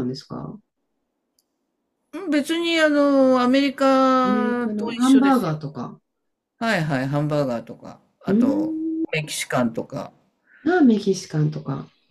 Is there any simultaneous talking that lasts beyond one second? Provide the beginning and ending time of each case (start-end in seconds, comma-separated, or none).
4.2-5.6